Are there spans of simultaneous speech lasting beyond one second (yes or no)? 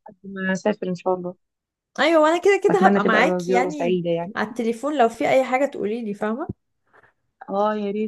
yes